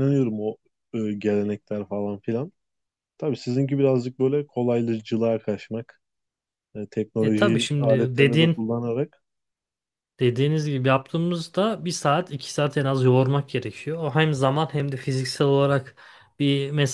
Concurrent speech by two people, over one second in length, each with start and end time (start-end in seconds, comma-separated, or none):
7.2-8.6